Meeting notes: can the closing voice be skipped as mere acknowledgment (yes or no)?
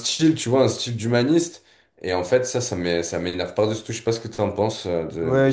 no